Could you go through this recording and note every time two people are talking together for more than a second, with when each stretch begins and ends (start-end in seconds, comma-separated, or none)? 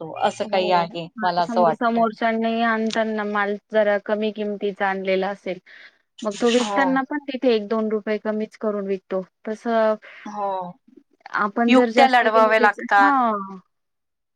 11.7-13.1